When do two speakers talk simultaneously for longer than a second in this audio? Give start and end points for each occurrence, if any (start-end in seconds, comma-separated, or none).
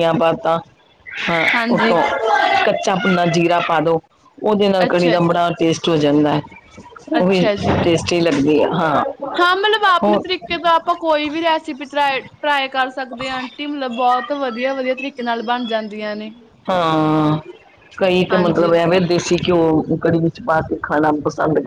none